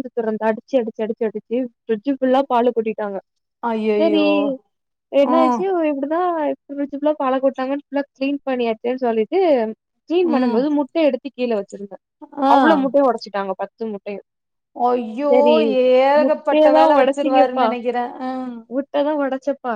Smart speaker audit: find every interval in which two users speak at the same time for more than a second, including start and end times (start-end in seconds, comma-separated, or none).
16.2-17.7